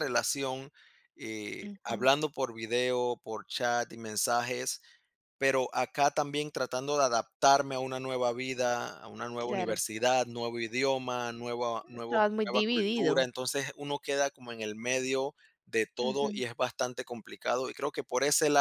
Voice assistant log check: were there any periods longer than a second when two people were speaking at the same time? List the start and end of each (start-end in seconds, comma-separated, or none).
11.9-13.3